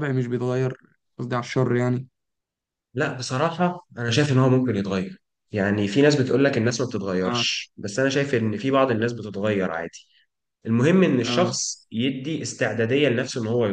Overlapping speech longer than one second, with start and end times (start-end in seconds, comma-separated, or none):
none